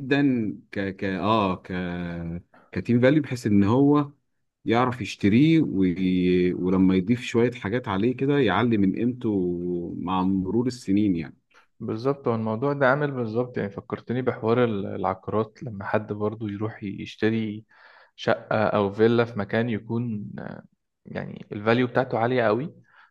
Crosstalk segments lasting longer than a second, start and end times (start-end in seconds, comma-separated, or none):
none